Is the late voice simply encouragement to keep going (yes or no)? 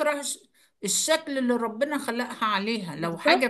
yes